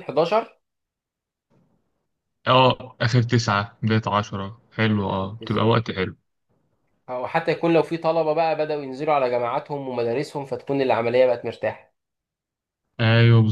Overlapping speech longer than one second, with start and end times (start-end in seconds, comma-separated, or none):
none